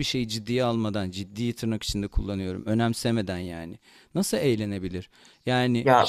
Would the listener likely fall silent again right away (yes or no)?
no